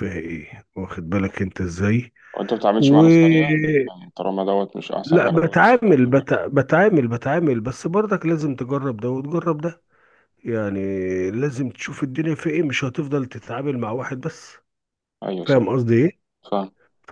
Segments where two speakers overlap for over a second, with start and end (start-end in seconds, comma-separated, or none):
none